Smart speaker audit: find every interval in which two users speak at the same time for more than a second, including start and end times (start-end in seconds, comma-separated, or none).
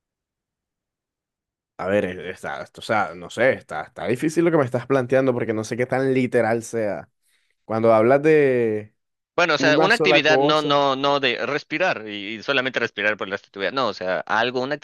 9.6-10.8